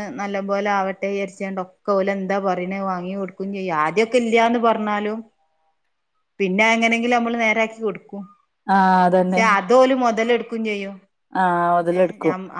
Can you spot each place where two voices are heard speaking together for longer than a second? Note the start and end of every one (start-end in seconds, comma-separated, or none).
none